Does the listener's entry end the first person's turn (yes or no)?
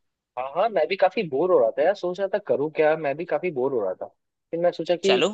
no